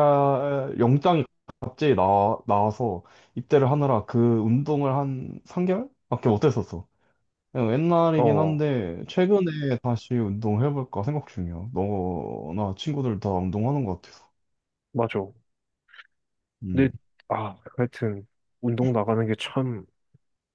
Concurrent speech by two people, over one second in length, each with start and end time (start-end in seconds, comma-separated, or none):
none